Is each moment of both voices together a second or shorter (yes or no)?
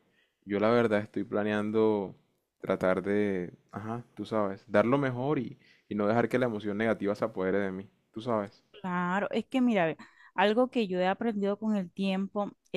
yes